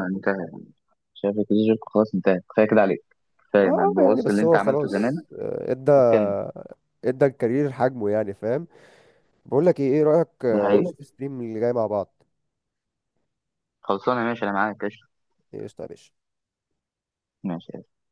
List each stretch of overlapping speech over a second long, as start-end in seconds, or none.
3.6-5.2